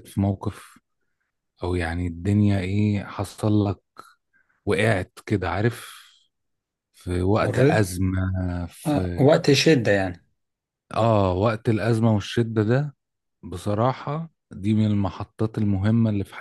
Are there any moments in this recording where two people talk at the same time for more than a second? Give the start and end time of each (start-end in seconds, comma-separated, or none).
none